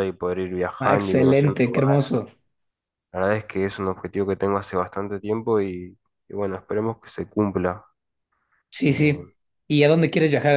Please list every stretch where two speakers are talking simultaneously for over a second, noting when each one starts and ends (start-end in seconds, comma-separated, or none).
0.8-2.2